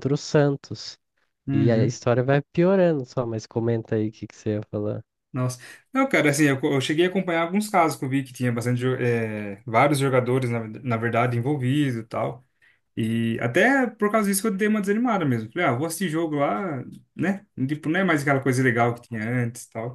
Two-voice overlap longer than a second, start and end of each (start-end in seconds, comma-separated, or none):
none